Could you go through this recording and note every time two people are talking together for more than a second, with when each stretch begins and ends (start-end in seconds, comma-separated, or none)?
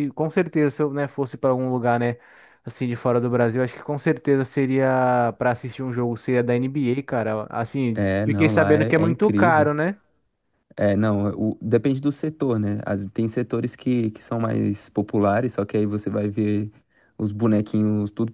7.9-9.7